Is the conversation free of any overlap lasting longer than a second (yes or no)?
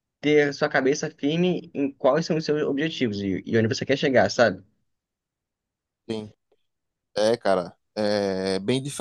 yes